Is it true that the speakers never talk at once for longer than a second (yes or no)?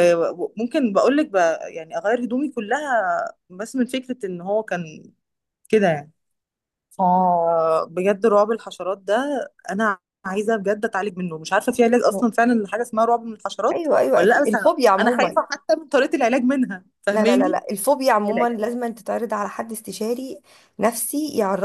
no